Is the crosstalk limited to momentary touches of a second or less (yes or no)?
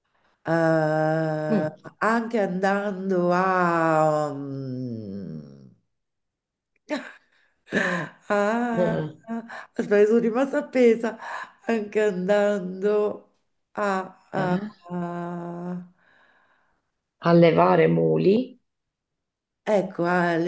yes